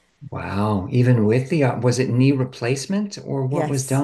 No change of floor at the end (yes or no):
no